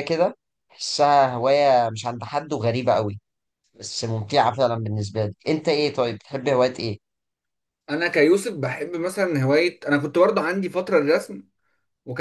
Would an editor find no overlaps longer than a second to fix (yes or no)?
yes